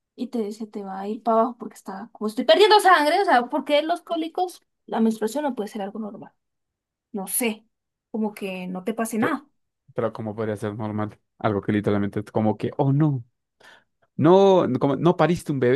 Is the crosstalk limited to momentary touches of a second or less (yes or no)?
yes